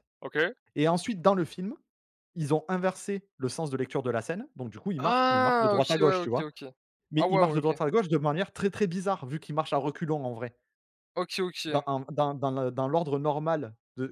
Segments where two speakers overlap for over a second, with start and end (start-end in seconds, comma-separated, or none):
5.0-6.5